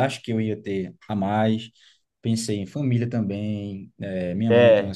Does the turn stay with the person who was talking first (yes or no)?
yes